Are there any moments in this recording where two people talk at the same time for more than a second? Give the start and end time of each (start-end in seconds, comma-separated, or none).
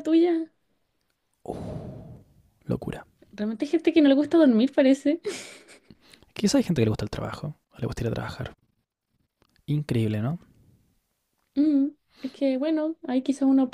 none